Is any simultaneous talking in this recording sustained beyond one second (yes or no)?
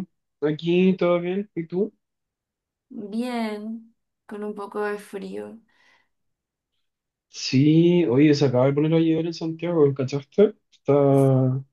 no